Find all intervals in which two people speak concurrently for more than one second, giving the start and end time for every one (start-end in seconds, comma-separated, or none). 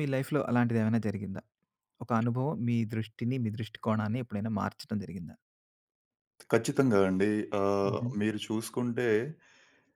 none